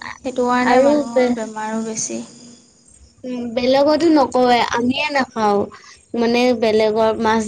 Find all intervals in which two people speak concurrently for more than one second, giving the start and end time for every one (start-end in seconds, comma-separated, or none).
none